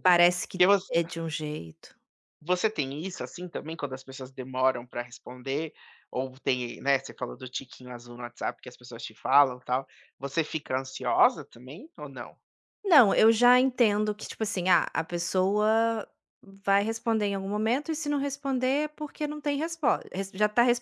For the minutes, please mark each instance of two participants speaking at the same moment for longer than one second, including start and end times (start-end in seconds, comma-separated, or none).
none